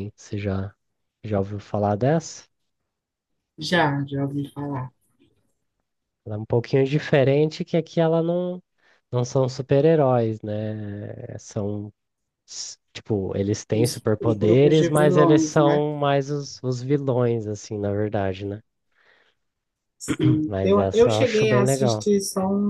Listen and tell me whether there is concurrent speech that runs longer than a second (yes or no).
yes